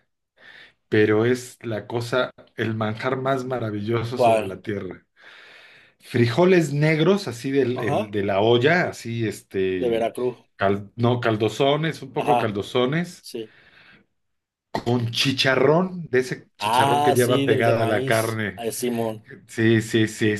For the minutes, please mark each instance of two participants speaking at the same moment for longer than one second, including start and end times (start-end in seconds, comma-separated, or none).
16.6-18.6